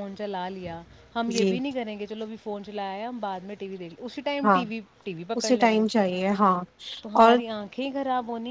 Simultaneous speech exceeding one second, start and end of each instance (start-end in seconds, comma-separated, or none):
none